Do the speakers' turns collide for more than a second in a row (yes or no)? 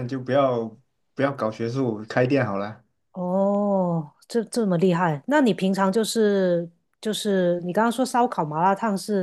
no